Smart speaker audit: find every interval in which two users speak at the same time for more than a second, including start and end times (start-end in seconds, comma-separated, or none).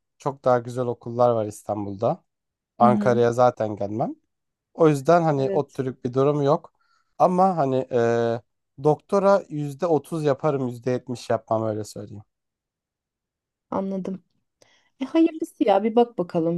none